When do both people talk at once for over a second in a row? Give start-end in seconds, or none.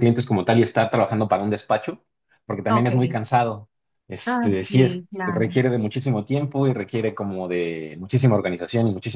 4.2-5.6